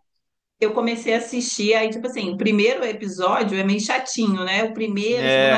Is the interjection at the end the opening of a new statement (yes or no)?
no